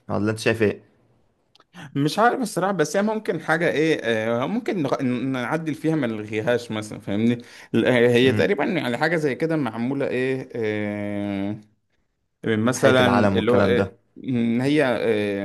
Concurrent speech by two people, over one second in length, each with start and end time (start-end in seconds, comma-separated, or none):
12.7-13.9